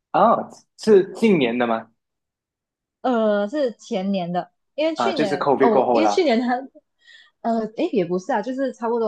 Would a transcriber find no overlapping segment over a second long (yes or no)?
no